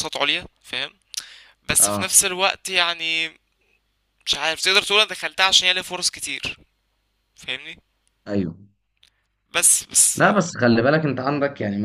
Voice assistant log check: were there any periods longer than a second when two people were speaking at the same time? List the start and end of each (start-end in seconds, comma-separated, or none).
none